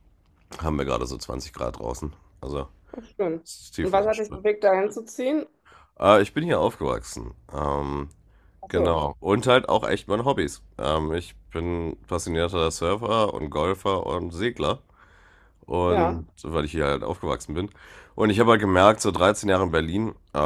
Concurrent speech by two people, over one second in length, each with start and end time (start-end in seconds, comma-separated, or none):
none